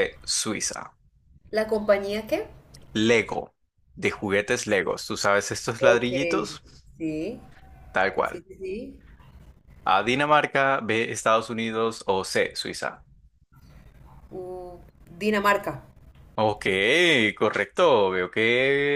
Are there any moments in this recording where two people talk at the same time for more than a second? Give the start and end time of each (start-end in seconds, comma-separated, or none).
none